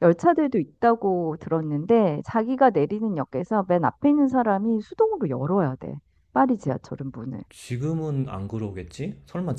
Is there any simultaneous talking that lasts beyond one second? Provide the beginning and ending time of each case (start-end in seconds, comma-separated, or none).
none